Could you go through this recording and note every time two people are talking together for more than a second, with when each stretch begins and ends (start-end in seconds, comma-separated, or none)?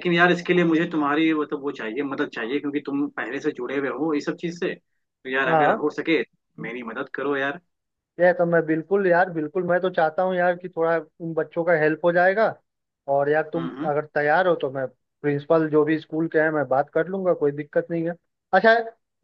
none